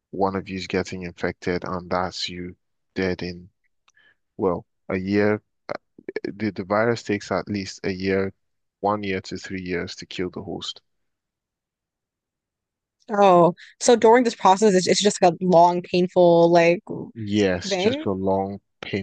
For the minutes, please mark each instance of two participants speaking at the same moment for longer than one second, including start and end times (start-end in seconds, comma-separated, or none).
none